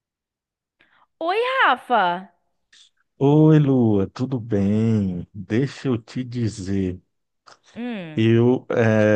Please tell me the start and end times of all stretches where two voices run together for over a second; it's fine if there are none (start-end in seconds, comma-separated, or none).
none